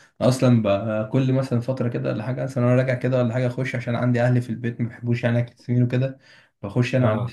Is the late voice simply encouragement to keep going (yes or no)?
yes